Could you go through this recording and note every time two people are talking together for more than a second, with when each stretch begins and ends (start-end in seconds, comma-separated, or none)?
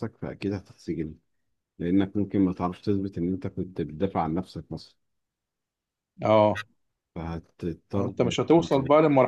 none